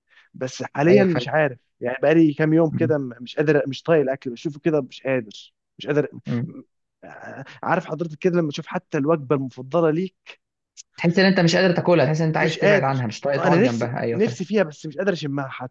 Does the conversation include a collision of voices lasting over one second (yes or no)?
yes